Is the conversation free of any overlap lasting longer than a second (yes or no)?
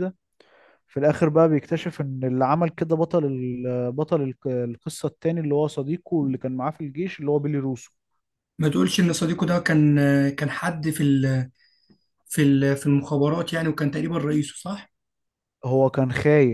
yes